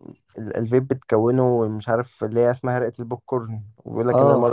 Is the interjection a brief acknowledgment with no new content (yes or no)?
no